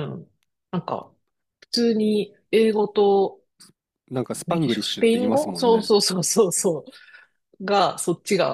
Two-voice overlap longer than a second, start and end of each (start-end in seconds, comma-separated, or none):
4.5-5.9